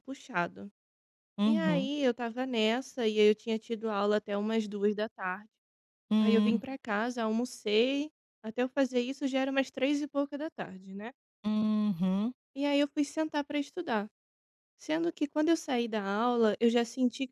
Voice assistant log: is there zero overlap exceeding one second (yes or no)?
yes